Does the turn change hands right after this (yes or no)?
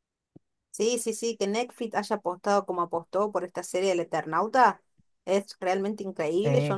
no